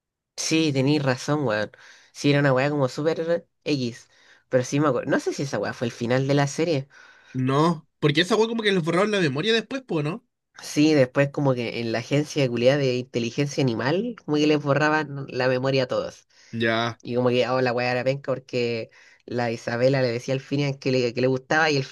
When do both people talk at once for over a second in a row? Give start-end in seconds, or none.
none